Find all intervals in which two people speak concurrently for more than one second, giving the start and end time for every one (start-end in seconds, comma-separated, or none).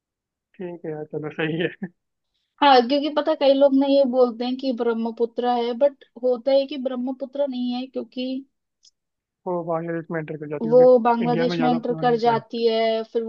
10.6-12.4